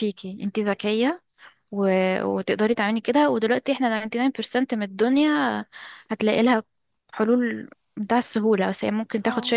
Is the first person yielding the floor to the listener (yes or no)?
no